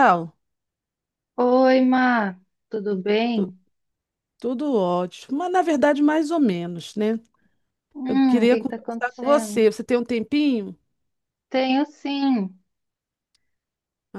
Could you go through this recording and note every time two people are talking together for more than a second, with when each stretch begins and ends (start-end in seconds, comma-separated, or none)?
8.1-9.7